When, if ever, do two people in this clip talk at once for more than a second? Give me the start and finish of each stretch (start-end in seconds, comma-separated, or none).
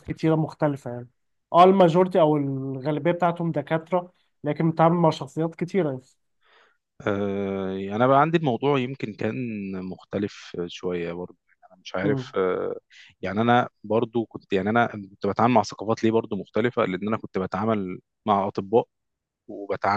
none